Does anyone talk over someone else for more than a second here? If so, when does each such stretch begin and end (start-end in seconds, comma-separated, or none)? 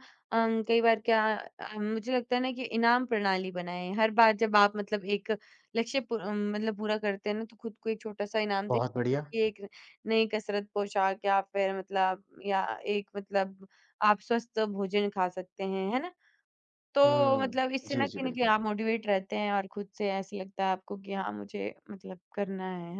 17.1-18.5